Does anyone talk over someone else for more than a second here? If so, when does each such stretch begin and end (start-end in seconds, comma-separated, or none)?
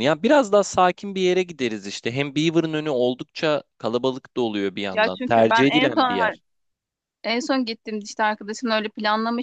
4.9-6.2